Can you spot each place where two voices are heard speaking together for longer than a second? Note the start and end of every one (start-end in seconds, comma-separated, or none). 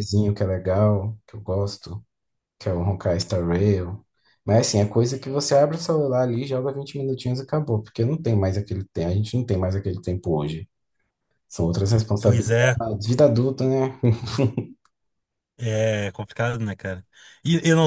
none